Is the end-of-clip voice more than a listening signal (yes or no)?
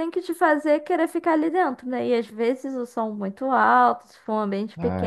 no